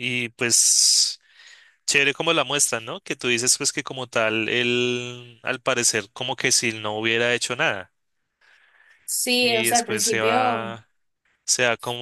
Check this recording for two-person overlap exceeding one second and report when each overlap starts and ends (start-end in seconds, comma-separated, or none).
9.4-10.7